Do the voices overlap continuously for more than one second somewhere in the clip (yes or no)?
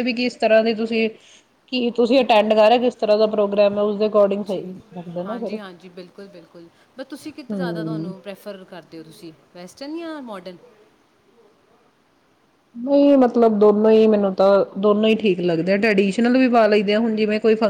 no